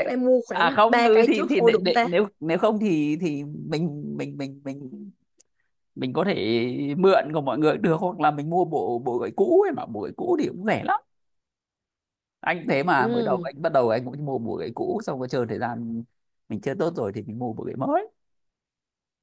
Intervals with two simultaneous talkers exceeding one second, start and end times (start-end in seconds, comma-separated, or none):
0.5-2.1